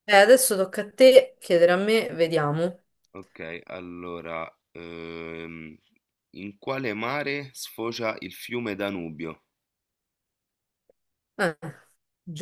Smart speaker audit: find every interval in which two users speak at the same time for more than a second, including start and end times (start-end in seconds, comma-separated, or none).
none